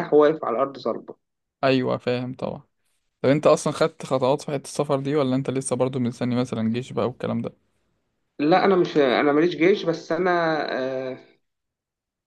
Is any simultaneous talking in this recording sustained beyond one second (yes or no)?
no